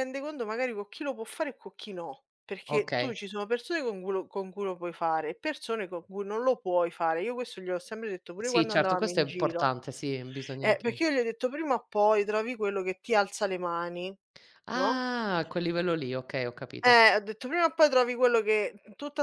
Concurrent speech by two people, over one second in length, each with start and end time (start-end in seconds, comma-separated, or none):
8.4-9.7